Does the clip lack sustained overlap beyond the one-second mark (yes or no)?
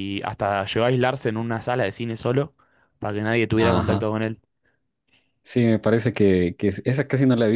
yes